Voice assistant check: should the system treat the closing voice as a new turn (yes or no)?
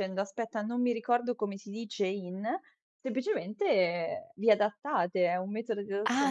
yes